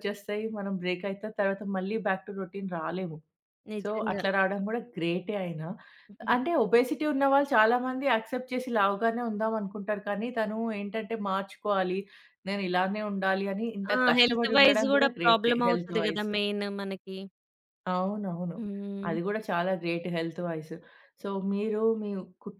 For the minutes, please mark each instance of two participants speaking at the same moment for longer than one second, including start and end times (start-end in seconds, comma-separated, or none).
13.9-16.3